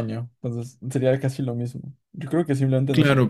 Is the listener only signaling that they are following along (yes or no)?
no